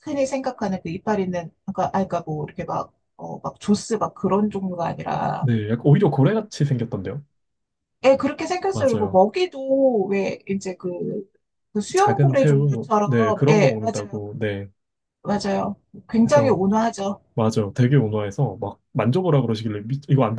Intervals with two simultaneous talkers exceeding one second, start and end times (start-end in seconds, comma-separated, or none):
11.9-14.2